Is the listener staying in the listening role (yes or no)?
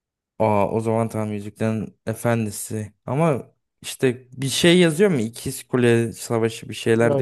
no